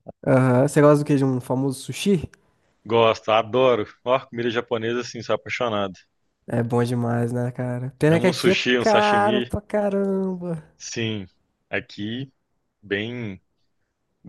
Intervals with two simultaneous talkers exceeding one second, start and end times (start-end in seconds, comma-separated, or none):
8.1-9.5